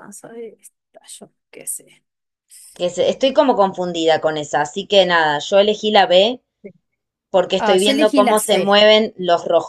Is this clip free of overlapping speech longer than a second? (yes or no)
no